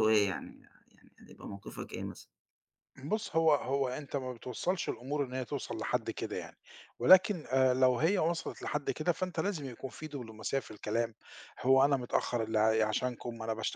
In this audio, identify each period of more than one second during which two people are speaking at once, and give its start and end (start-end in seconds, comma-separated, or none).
none